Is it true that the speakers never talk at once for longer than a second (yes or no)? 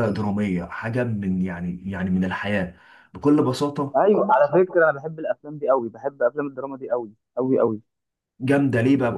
yes